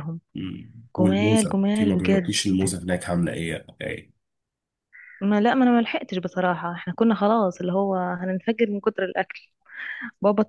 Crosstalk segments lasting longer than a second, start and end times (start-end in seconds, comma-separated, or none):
1.0-2.4